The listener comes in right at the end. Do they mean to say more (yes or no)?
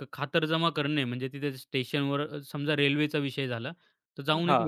no